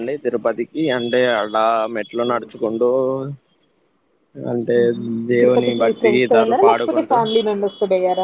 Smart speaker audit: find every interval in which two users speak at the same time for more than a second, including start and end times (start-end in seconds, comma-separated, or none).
5.4-7.2